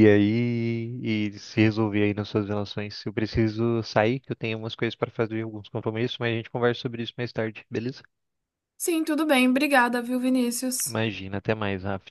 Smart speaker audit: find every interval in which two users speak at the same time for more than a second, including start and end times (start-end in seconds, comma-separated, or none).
none